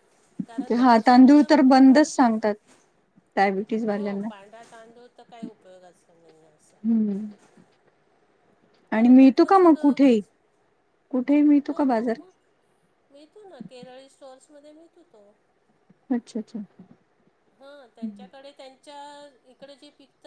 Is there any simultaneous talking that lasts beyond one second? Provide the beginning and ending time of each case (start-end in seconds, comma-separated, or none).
8.9-10.2